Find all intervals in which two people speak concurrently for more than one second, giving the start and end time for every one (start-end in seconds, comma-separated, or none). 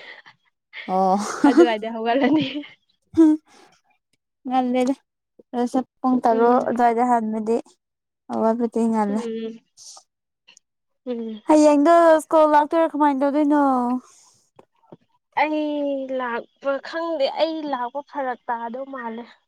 none